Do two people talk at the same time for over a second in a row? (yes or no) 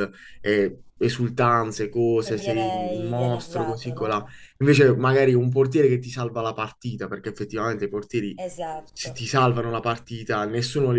yes